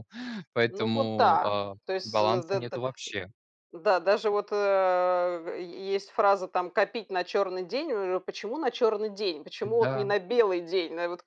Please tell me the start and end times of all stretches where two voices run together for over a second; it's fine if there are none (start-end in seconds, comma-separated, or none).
0.7-2.8